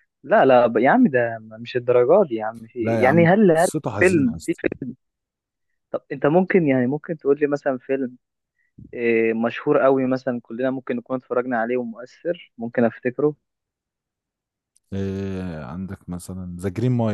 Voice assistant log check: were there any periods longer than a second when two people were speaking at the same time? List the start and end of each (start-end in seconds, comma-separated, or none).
2.8-4.7